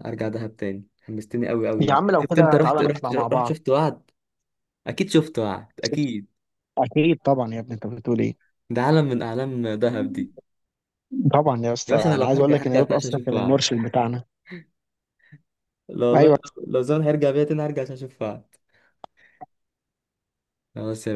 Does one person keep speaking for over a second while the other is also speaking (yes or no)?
yes